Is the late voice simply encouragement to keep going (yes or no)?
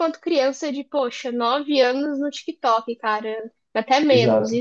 no